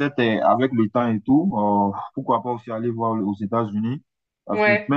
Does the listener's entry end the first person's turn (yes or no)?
no